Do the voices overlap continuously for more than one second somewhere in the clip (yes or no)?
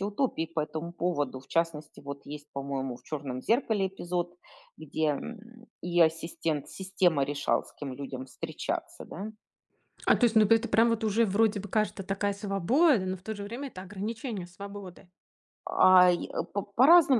no